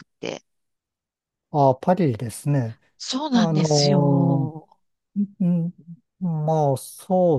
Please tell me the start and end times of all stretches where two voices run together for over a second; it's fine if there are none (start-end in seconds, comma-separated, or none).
3.3-4.5